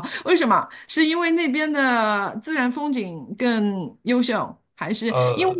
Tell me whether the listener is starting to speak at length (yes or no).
no